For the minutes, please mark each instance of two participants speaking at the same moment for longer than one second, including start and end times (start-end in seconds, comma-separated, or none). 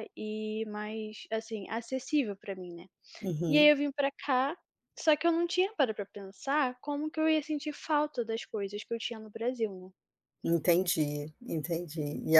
none